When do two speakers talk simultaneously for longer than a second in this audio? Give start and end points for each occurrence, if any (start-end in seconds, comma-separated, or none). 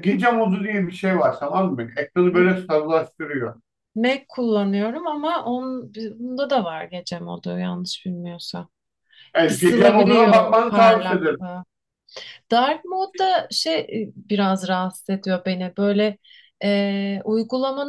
9.4-11.4